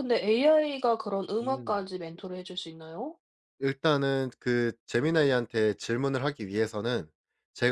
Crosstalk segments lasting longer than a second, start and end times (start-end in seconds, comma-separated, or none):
none